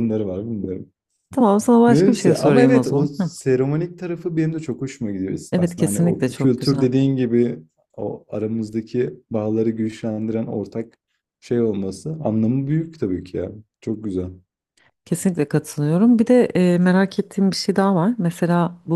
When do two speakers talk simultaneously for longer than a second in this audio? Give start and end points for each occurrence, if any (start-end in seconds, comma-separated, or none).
1.9-3.3, 5.5-6.9